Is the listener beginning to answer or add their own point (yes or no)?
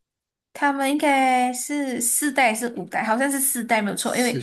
no